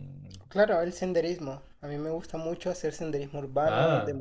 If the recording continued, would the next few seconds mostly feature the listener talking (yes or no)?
no